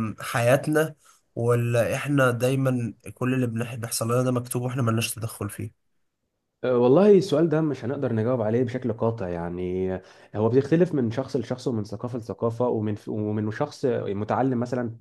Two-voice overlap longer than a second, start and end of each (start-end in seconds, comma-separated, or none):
none